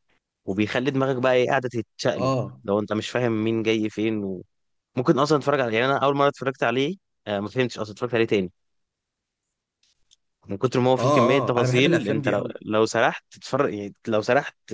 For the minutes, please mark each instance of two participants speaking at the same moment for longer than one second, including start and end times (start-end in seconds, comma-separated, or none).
11.0-12.6